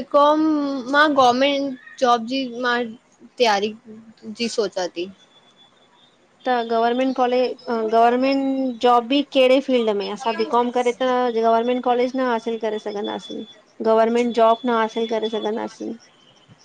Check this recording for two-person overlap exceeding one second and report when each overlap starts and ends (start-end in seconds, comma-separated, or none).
none